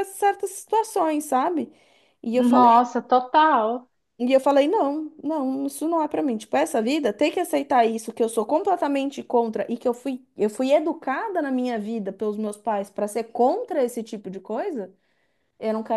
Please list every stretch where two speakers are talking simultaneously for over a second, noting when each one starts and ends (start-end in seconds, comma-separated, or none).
none